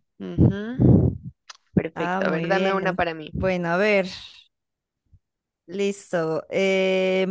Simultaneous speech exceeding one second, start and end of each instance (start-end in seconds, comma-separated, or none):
2.0-3.3